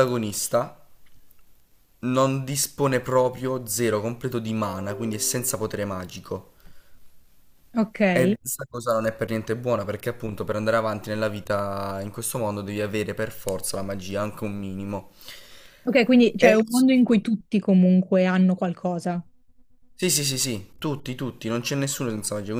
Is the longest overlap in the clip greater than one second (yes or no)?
no